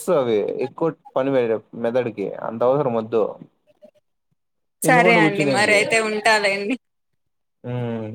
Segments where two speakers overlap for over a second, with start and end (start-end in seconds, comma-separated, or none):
none